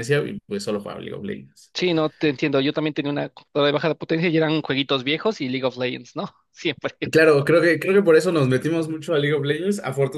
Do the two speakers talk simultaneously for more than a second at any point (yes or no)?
no